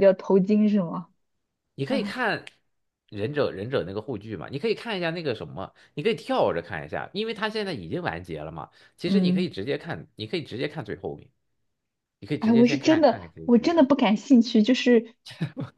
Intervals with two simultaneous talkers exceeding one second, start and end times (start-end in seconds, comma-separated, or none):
12.4-13.9